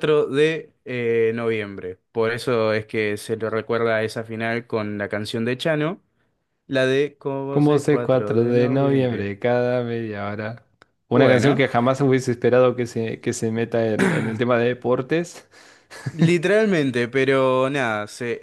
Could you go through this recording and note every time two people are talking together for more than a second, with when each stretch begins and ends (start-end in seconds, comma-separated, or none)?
7.5-9.3